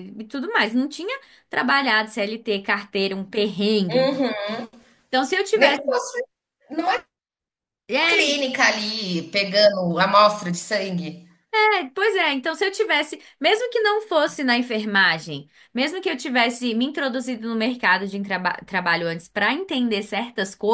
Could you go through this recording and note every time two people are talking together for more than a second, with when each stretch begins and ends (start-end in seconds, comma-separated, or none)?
none